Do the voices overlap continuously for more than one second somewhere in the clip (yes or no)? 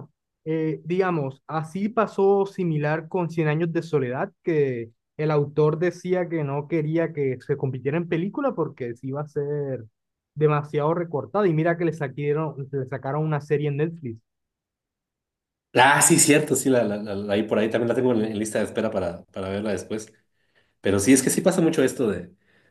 no